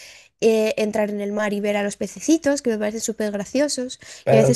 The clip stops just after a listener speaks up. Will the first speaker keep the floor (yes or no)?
no